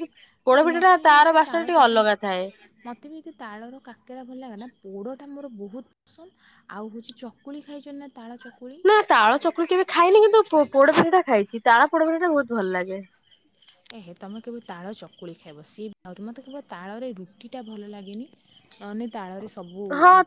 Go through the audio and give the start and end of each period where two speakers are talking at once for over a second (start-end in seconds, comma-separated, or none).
none